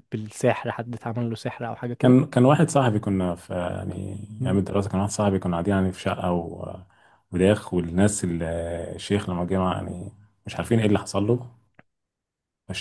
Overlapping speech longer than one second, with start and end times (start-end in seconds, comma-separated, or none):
none